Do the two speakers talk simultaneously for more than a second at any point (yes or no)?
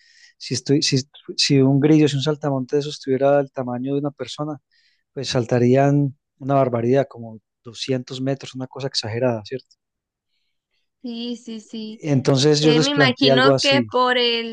yes